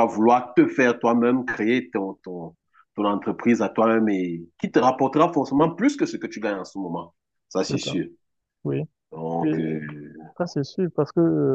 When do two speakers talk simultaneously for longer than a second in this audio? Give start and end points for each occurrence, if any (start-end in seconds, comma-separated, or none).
none